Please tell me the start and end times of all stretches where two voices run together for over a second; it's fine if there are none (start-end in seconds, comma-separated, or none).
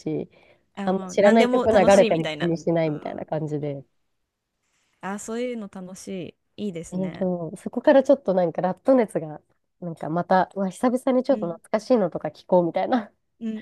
0.8-3.2